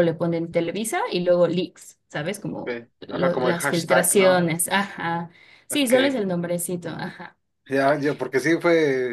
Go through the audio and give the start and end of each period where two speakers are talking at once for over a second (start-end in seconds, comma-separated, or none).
2.5-4.4